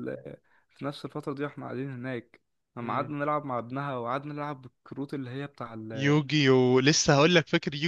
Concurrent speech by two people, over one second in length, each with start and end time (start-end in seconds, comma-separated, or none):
none